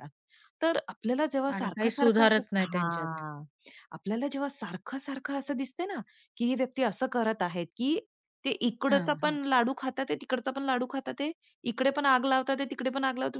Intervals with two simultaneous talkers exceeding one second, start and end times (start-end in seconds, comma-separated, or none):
1.5-3.2